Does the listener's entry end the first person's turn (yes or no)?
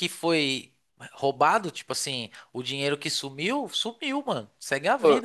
yes